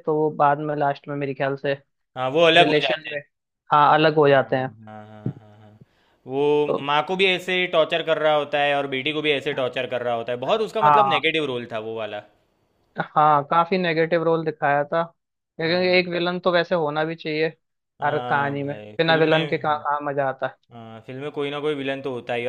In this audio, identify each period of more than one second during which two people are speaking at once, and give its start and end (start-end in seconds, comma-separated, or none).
18.0-19.8